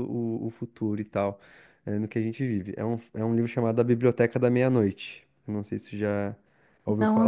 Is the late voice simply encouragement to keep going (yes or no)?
no